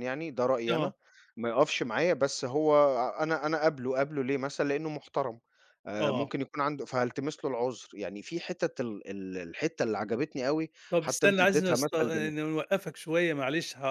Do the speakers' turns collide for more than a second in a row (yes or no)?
yes